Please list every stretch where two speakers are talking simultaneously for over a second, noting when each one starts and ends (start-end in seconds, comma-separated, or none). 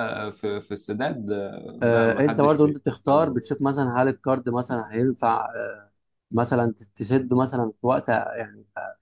1.8-3.4